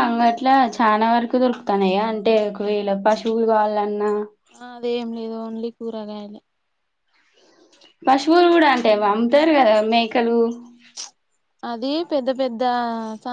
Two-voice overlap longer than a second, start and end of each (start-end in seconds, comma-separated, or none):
none